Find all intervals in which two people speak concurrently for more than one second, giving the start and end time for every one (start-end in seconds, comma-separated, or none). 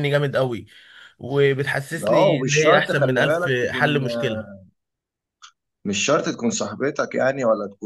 2.1-3.9